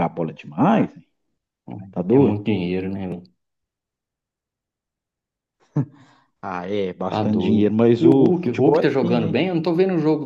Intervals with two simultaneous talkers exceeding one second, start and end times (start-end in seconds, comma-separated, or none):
7.1-9.3